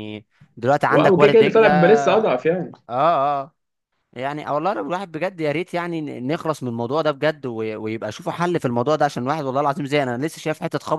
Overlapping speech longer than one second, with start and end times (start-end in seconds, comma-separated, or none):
0.9-2.3